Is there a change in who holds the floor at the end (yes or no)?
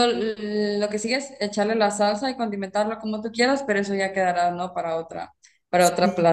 yes